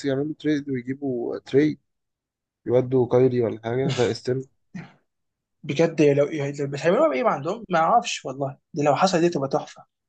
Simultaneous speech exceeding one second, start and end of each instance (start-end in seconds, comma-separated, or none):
none